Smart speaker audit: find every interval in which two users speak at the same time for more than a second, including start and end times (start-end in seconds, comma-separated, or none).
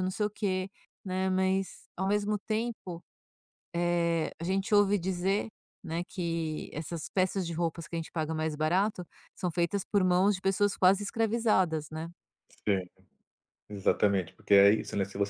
none